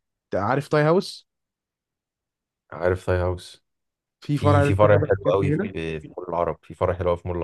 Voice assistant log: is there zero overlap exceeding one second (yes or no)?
no